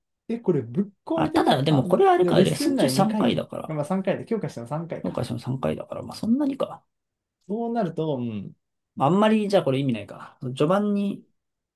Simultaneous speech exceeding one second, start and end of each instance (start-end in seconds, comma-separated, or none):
1.1-3.9